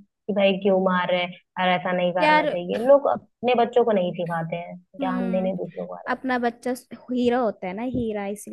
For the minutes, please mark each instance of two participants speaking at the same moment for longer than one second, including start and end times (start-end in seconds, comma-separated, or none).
none